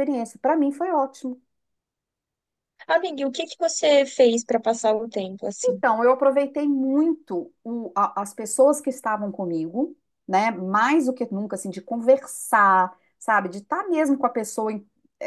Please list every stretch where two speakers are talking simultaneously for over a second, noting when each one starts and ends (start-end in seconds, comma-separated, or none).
none